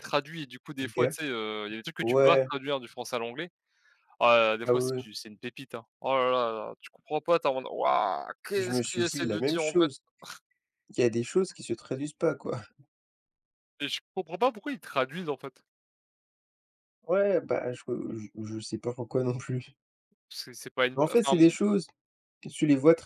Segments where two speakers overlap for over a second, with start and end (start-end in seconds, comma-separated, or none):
8.6-9.9